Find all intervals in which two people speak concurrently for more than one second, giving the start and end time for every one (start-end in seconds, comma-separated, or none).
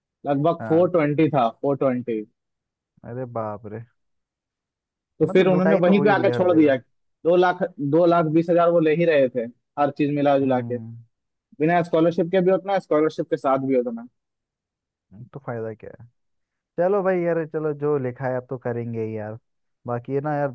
5.2-6.8